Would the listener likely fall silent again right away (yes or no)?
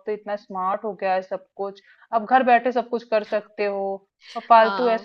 no